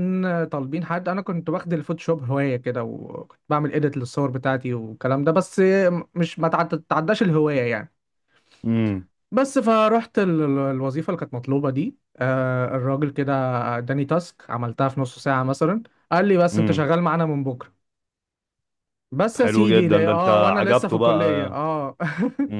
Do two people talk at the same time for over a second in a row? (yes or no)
yes